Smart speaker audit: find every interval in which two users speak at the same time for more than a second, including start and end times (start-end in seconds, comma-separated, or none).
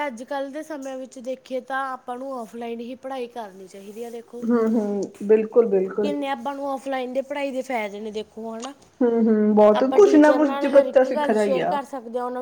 9.8-11.8